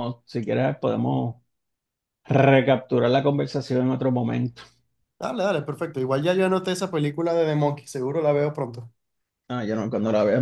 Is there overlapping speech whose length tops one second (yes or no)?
no